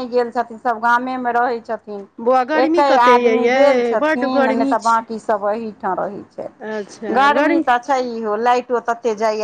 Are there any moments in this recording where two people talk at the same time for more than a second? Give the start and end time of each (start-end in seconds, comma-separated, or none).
2.7-5.0